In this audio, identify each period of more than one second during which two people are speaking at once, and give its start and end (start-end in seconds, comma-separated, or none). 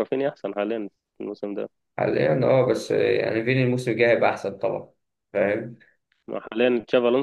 none